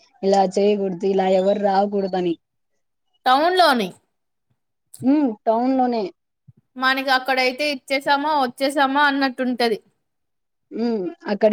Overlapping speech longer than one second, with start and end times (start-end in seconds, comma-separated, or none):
none